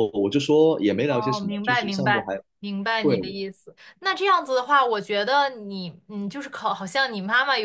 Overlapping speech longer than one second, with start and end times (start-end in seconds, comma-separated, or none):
1.1-2.4